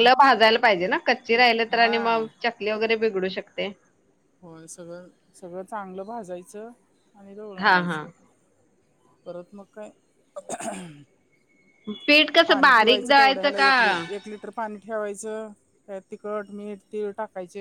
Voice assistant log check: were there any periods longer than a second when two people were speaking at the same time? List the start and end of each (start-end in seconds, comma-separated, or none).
12.5-13.7